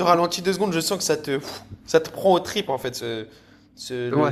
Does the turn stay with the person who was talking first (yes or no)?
no